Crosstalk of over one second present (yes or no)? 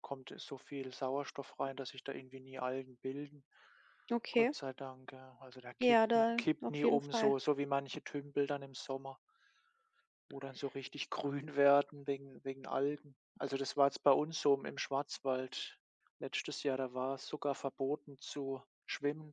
yes